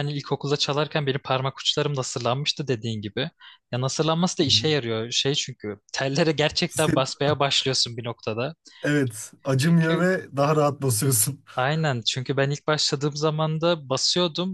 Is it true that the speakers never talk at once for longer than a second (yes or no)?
yes